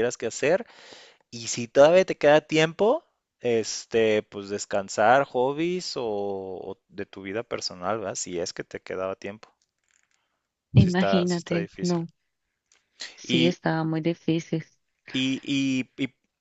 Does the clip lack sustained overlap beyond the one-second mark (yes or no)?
no